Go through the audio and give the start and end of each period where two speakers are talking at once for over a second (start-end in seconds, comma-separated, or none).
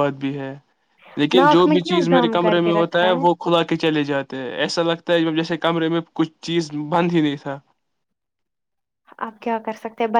1.4-3.1